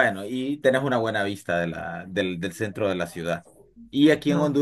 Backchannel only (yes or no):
yes